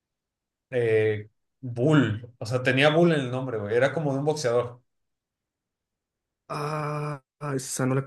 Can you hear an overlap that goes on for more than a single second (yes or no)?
no